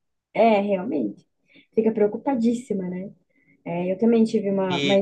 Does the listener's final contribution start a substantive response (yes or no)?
yes